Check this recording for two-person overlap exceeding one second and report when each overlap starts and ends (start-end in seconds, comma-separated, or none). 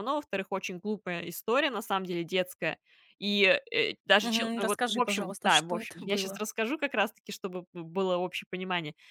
4.2-6.4